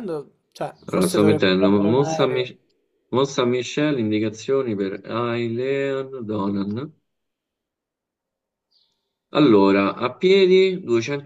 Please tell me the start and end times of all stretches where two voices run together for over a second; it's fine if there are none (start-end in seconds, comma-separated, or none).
0.8-2.5